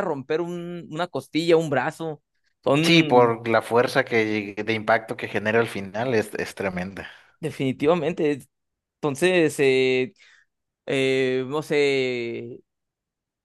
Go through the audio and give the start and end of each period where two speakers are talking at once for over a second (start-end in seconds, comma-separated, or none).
none